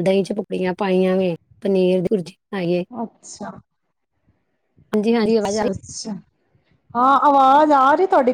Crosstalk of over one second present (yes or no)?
no